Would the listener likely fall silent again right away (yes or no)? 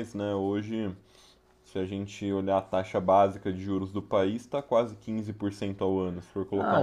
no